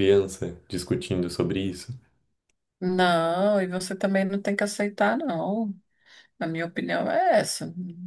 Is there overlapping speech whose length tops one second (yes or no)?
no